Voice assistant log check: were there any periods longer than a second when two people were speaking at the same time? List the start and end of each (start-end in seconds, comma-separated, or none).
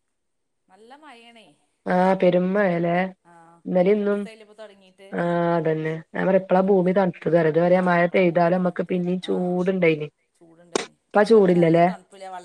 none